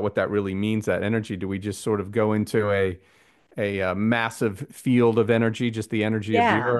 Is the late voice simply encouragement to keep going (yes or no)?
yes